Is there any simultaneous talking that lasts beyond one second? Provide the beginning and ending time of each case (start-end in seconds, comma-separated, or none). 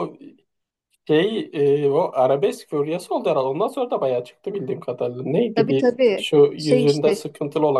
5.5-7.2